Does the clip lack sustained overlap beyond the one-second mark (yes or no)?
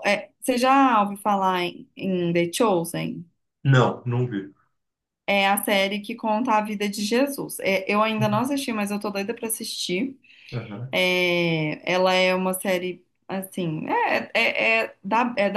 yes